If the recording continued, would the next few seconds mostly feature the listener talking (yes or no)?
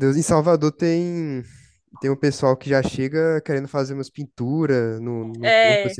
no